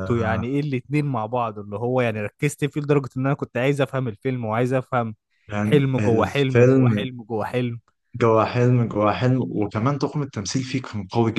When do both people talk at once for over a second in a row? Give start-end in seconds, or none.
5.6-7.0